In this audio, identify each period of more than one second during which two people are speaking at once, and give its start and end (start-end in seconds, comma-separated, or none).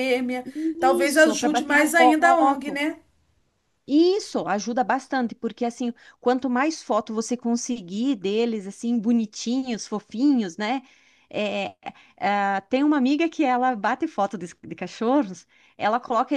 1.0-2.8